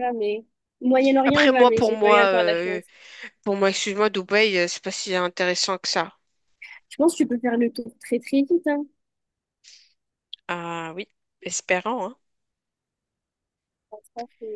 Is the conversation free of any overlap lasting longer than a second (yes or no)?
no